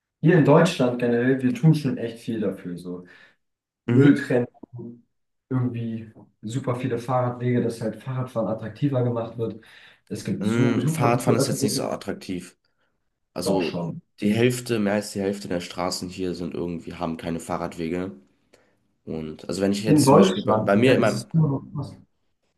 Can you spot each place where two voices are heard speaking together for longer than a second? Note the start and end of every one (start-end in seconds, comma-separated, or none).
10.4-11.9, 19.9-21.2